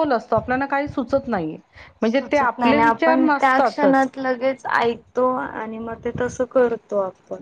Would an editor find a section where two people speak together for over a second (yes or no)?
yes